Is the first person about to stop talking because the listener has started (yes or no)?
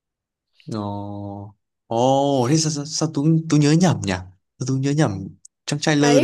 yes